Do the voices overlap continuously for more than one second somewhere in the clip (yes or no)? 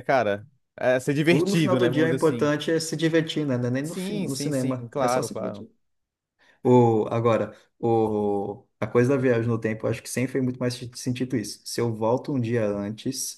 yes